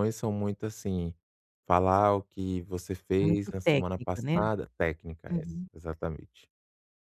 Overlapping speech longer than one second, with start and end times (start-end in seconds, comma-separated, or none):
3.2-4.4